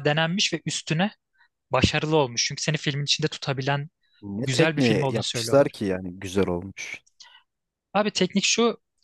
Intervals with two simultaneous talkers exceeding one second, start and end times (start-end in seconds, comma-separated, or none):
4.4-5.8